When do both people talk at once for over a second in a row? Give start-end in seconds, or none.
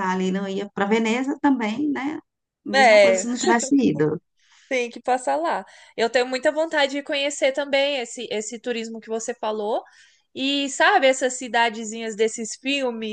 none